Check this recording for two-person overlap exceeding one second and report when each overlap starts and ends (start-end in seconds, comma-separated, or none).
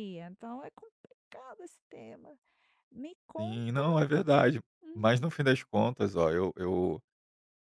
none